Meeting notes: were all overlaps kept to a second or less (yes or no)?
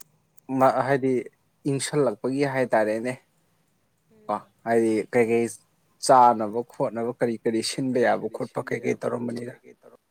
no